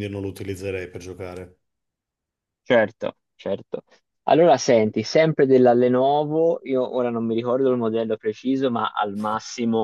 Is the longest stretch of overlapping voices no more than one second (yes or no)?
yes